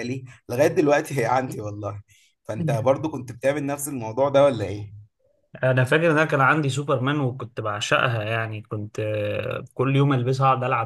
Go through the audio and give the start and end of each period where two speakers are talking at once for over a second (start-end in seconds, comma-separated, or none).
none